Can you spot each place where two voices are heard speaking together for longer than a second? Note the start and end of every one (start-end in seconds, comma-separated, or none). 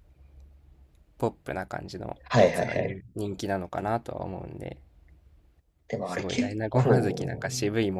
6.0-7.5